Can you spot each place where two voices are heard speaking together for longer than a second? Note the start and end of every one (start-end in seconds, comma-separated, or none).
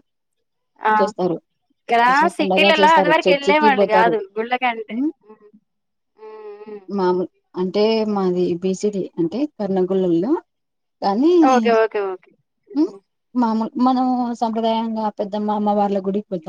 2.0-4.2